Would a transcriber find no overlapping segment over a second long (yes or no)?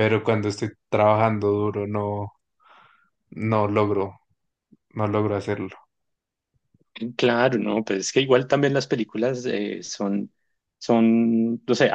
yes